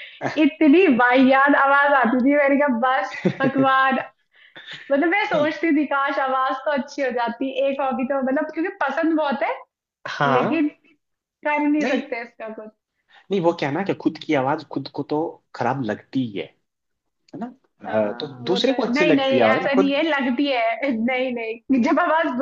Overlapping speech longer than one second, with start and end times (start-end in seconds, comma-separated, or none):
17.9-19.9